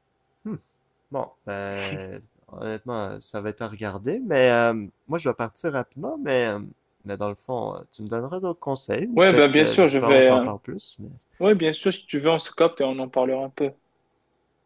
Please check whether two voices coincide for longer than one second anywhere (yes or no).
yes